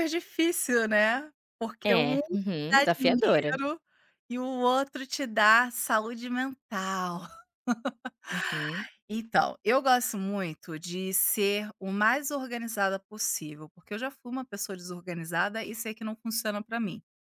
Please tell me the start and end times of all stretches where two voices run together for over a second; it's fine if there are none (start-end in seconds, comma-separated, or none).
1.9-3.6